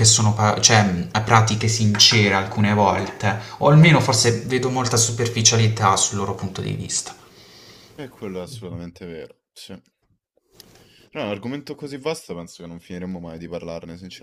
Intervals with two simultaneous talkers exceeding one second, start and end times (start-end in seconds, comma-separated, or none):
none